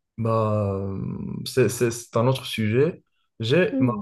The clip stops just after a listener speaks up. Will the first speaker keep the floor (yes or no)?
yes